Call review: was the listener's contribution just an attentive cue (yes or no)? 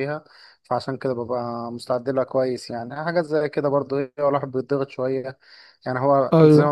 yes